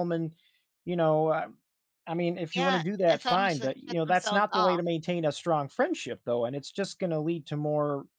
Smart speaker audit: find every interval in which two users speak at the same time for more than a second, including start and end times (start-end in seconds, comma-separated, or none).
2.5-4.8